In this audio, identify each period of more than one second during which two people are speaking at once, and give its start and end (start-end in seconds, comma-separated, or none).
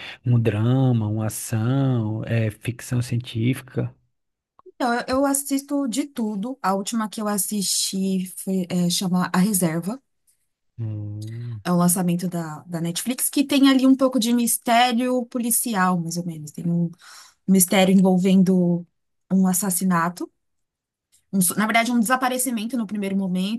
none